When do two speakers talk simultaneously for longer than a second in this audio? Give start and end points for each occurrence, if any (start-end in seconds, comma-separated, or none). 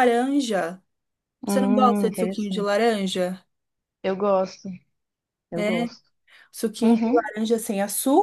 1.5-2.7